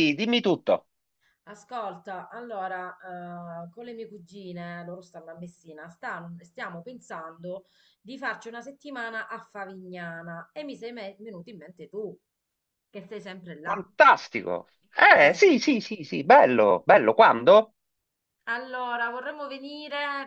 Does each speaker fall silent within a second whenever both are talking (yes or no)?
yes